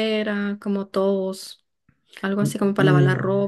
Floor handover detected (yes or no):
yes